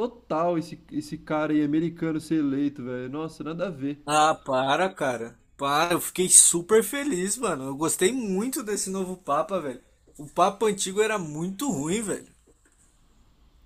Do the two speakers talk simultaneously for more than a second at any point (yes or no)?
no